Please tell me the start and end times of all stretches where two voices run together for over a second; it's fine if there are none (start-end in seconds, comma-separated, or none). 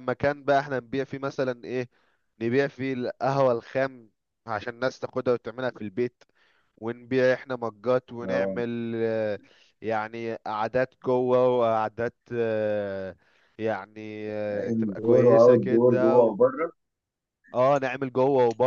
14.7-16.4